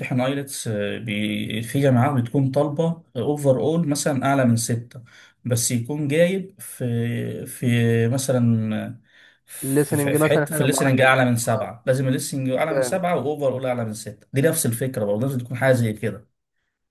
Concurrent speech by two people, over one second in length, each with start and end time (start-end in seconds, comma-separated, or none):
9.6-11.7